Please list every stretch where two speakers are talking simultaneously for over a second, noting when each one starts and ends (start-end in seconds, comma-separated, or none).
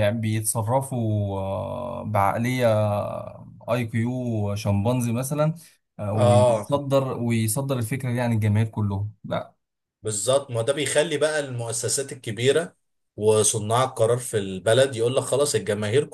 none